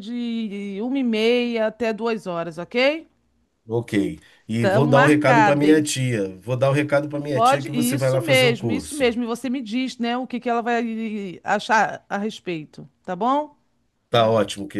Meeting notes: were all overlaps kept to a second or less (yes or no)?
no